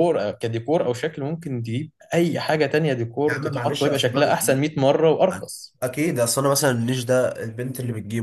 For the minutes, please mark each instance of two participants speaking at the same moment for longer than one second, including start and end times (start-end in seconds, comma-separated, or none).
3.3-4.6